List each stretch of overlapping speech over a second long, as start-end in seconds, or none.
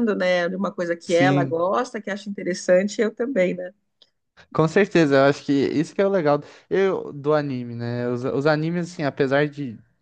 none